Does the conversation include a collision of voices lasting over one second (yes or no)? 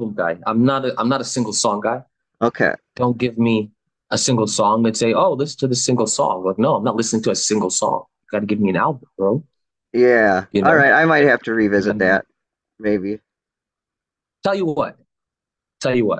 no